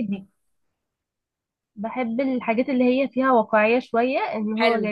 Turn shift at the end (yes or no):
yes